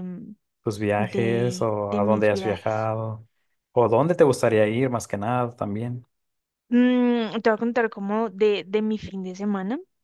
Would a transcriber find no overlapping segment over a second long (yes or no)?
no